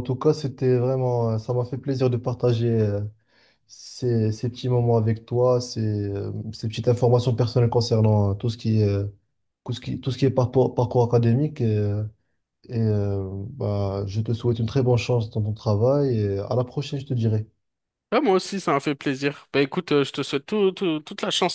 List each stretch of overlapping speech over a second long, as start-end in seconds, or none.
none